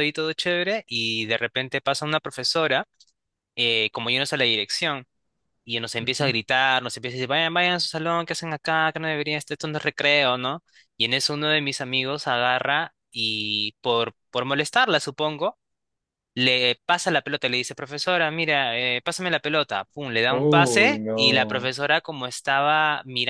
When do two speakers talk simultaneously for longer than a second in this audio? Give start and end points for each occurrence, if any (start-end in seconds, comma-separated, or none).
20.3-21.7